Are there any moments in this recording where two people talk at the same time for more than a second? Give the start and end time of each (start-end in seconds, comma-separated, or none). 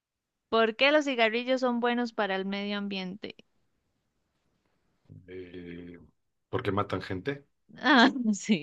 none